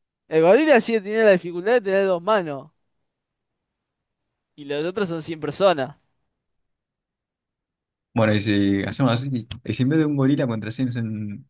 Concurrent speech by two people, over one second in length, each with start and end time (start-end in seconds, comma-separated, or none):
none